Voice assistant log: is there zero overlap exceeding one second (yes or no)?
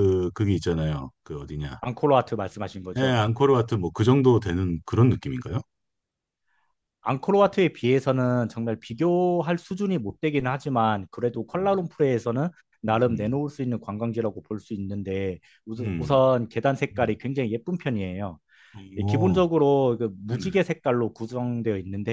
yes